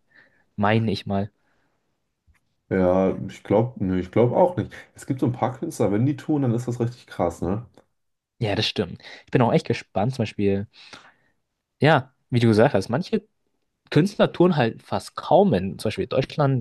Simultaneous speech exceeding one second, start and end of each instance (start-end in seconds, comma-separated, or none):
none